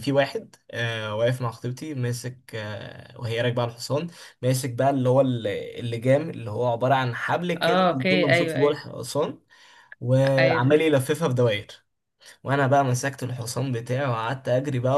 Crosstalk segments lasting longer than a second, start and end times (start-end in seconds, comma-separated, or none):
7.6-8.9